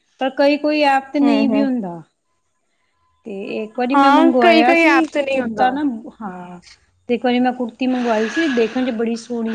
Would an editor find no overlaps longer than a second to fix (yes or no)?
no